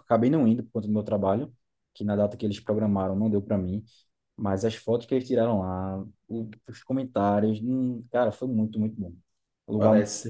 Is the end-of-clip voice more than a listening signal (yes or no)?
yes